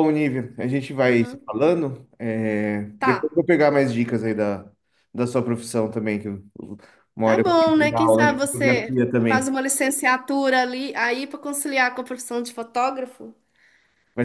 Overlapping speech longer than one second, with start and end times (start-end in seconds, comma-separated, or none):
7.2-9.5